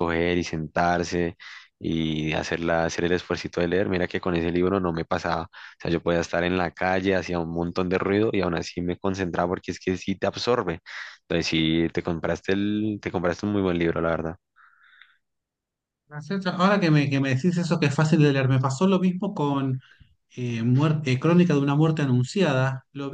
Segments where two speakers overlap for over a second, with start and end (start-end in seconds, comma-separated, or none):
none